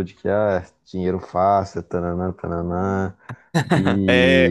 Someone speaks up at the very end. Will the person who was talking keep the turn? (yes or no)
no